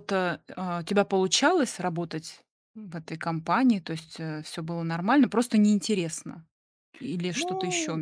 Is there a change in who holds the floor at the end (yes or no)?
yes